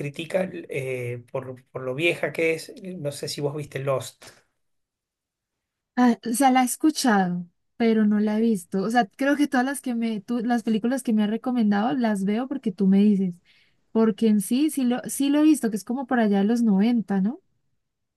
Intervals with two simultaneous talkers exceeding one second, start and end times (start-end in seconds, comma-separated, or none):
none